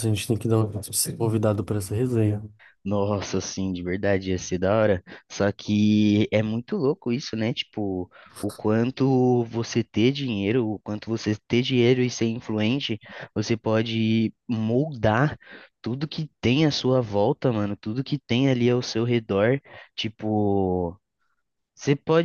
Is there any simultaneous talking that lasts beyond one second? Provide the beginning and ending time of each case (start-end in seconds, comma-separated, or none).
none